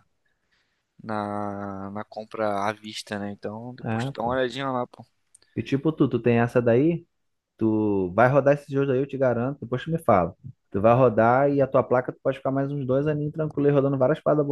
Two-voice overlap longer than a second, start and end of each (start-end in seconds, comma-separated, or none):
none